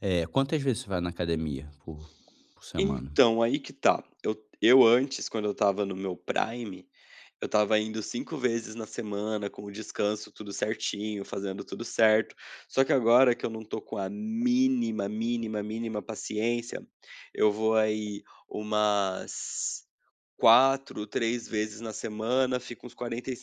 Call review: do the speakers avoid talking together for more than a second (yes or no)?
yes